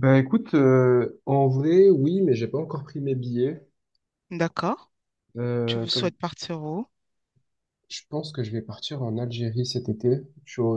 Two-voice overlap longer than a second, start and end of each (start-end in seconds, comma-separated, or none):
none